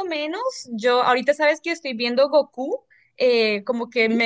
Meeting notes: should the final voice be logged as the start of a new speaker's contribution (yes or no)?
no